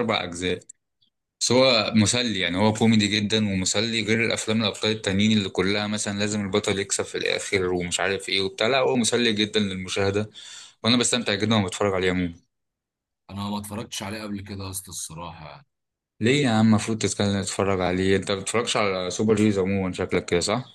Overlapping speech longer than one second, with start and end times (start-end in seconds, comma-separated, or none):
none